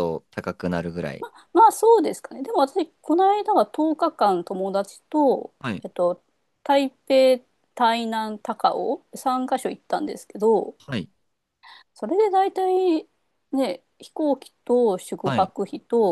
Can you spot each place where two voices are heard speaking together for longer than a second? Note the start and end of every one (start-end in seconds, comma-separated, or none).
none